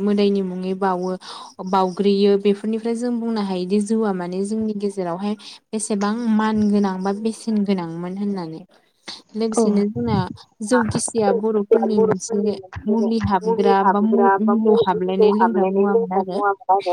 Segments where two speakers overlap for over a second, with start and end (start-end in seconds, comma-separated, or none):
13.4-16.2